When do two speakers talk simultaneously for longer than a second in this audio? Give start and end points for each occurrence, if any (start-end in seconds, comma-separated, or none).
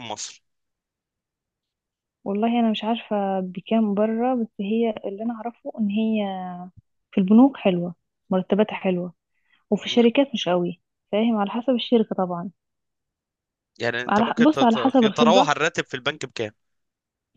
14.1-15.5